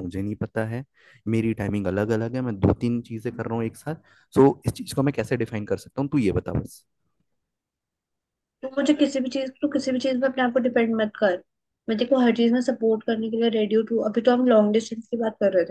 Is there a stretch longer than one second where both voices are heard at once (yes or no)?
no